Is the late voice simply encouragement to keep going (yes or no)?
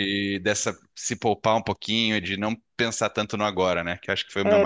no